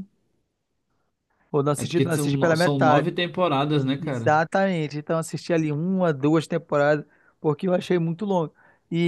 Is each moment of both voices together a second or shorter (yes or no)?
no